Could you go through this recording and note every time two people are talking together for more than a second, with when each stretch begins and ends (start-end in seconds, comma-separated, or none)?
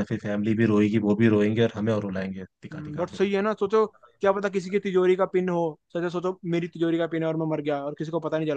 none